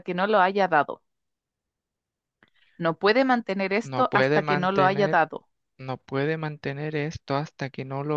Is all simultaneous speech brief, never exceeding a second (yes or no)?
no